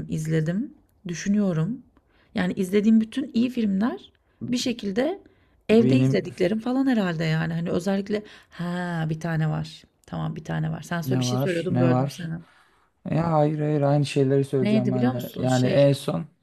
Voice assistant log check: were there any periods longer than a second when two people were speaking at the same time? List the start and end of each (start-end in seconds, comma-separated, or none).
11.1-12.3, 14.6-15.8